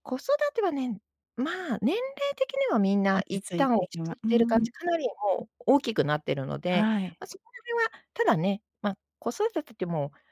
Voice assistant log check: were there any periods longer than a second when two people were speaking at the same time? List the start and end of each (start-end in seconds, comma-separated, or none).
3.1-4.7